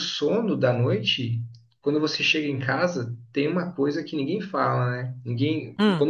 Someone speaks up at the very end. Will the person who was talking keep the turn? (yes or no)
yes